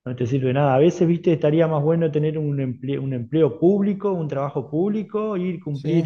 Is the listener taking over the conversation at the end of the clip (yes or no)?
no